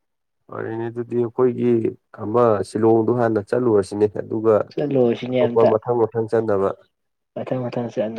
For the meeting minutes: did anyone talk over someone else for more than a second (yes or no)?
no